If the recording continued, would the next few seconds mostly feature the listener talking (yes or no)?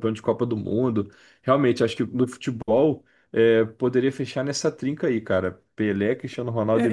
yes